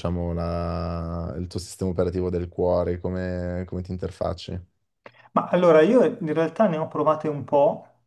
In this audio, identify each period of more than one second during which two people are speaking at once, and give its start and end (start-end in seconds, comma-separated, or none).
none